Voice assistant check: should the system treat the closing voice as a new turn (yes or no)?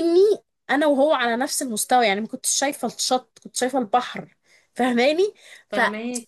no